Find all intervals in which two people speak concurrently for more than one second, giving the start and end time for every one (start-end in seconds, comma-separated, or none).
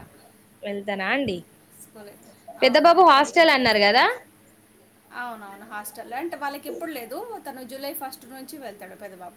2.6-4.0